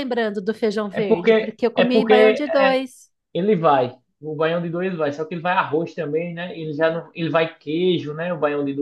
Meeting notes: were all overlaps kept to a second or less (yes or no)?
no